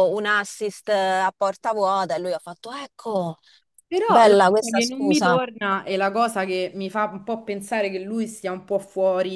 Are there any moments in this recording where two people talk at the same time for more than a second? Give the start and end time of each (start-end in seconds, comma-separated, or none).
4.0-5.4